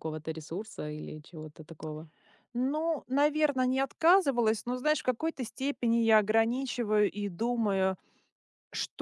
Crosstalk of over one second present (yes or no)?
no